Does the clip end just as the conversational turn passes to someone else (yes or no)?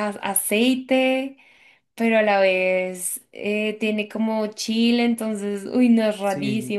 yes